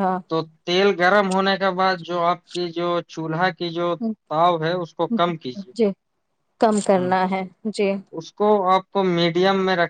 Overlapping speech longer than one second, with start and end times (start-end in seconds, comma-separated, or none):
none